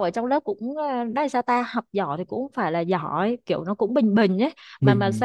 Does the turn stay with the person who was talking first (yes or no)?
no